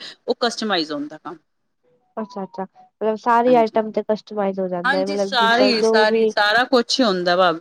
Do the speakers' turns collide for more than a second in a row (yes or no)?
no